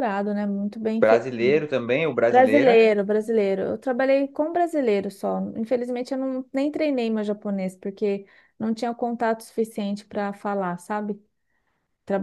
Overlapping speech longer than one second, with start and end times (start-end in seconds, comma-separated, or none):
none